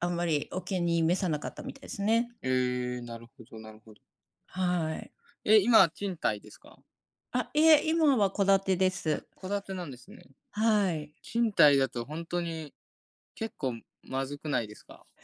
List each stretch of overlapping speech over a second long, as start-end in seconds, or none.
none